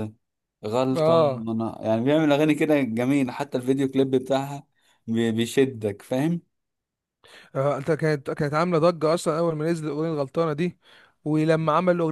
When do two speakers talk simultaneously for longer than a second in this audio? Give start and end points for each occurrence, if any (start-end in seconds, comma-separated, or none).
none